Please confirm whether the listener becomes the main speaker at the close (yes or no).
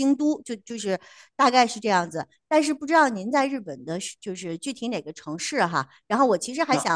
no